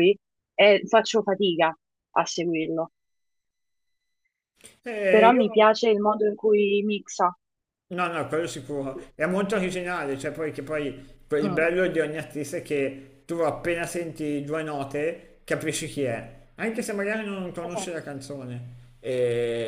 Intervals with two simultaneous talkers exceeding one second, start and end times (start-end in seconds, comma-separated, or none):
none